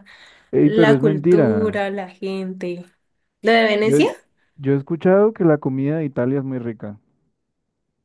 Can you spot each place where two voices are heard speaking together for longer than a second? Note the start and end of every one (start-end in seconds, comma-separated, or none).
0.6-1.8